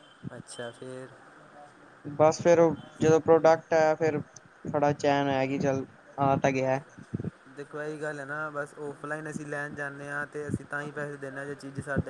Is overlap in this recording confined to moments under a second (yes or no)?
yes